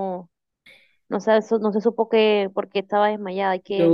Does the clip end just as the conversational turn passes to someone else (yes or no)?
yes